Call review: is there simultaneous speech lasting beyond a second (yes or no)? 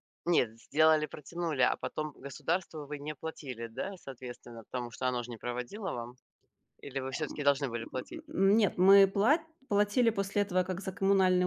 no